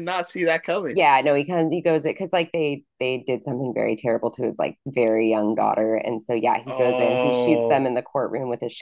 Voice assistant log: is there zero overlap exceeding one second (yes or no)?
no